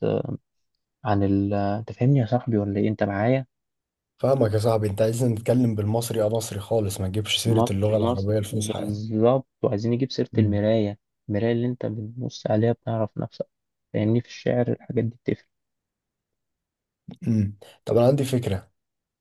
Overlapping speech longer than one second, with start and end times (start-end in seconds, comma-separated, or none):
7.4-9.0